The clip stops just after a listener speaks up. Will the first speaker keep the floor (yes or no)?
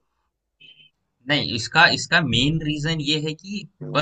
yes